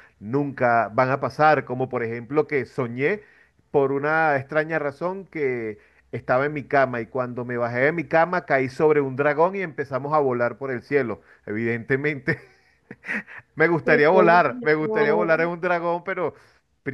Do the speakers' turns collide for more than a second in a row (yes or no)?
yes